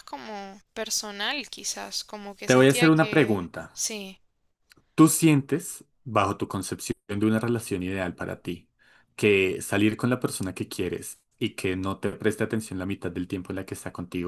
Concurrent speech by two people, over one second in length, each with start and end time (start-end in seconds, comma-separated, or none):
2.4-3.9